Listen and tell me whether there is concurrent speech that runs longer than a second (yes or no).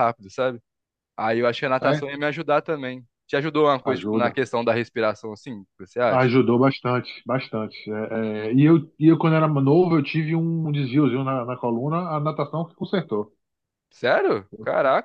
no